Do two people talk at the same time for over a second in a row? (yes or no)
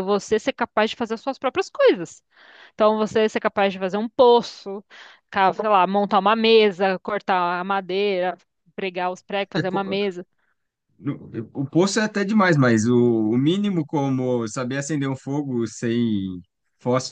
no